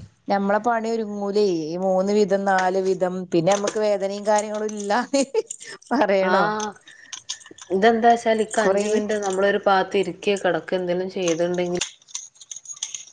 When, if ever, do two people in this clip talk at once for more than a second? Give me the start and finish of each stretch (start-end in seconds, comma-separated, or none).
none